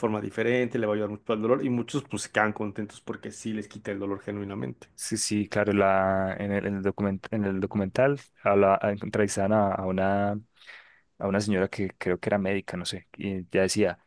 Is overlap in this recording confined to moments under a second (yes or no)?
yes